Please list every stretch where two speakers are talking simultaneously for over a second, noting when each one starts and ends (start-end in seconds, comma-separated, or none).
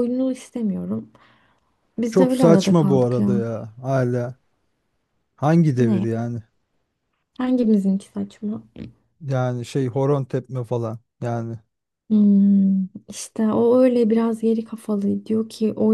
2.1-3.4